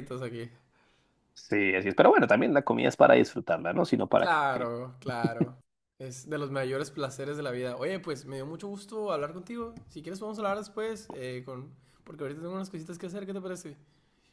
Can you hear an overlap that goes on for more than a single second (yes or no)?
no